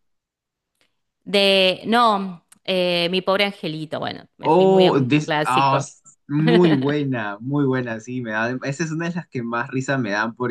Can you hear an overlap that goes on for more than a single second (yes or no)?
yes